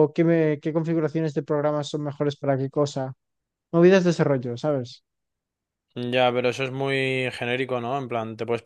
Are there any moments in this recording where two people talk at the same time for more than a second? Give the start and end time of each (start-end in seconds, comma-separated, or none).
none